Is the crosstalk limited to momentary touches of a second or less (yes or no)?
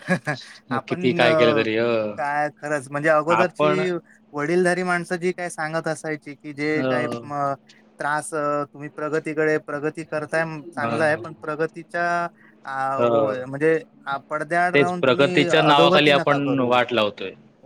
no